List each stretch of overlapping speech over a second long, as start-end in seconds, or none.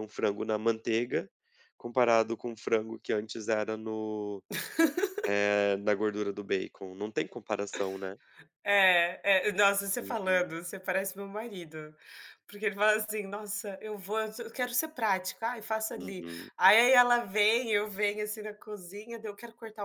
none